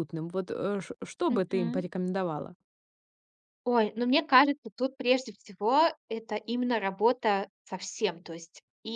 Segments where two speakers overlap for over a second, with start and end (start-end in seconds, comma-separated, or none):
none